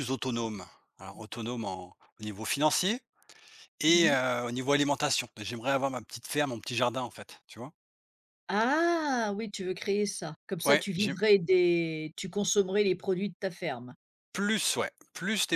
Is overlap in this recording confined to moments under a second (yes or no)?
yes